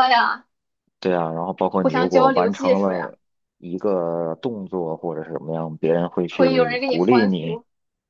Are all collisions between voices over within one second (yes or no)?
no